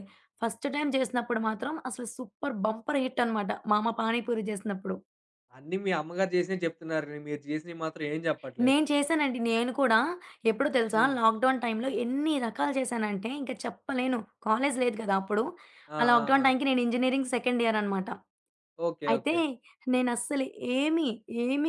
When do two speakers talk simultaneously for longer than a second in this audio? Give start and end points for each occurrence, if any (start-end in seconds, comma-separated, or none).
none